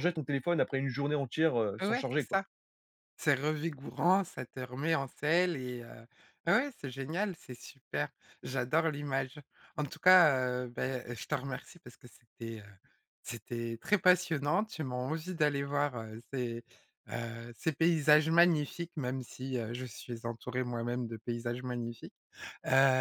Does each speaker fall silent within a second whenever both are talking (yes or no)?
yes